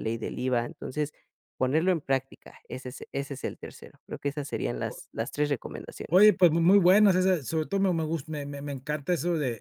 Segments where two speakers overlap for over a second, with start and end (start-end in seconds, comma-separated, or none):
none